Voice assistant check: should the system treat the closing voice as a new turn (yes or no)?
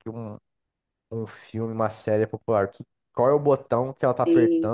no